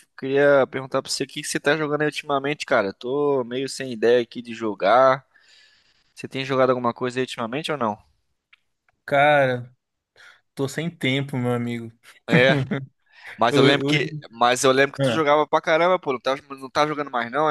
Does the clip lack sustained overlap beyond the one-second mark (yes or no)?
yes